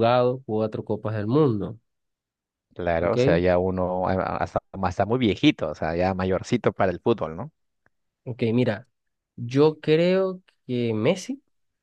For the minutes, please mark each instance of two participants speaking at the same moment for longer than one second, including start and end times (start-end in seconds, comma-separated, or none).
none